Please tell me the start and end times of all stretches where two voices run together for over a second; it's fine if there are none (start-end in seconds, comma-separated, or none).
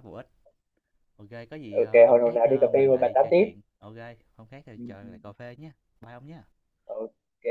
1.7-3.5